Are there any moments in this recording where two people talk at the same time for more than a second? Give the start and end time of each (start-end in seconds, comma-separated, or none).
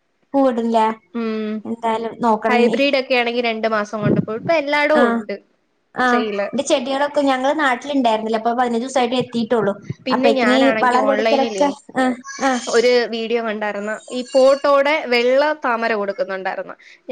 10.1-11.7